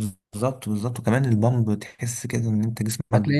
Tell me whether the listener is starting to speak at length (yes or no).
yes